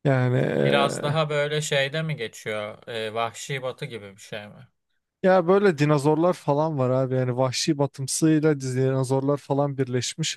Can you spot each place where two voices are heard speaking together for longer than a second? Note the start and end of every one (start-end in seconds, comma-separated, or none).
none